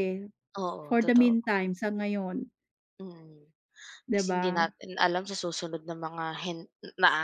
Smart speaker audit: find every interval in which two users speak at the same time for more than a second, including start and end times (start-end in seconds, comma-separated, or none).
none